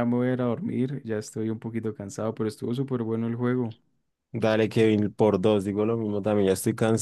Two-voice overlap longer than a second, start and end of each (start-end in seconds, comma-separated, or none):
none